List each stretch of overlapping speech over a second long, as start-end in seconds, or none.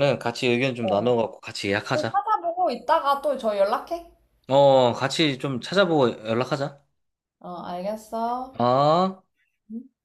none